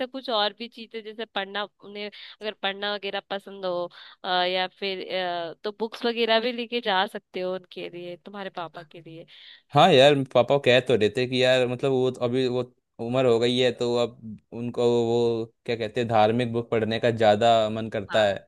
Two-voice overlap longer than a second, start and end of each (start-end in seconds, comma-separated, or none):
none